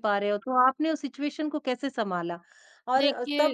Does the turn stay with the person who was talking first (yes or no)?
yes